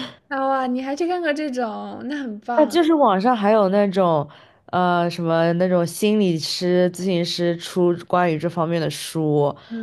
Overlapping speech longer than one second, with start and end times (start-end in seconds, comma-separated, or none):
none